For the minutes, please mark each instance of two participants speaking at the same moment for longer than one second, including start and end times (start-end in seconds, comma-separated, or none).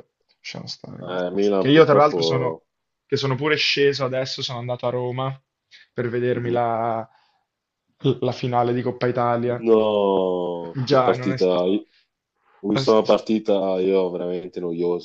1.1-2.6